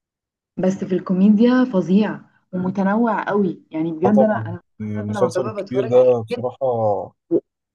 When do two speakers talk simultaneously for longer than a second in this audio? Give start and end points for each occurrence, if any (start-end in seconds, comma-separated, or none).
4.0-6.4